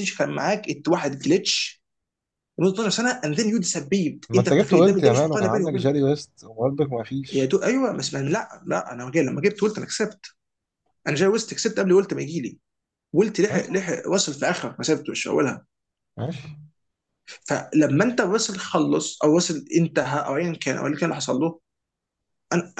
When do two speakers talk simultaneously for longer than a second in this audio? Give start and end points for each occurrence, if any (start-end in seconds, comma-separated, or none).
4.3-5.9